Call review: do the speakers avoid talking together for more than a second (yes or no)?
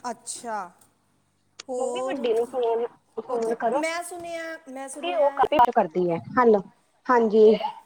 yes